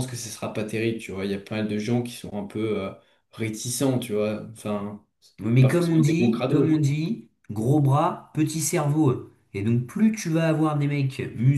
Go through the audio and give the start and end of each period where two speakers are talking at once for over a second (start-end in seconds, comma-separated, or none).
5.6-6.8